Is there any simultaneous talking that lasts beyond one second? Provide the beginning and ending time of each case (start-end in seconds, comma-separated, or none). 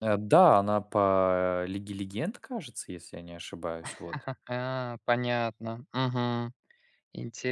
none